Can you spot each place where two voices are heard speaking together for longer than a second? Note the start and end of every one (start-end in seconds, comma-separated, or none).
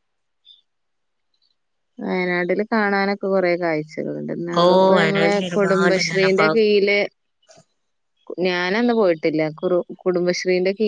4.6-6.7